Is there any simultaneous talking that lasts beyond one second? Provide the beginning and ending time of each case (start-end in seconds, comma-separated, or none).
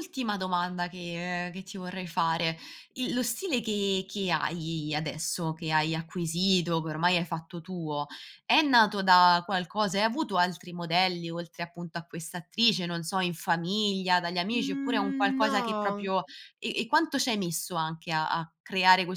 14.5-16.1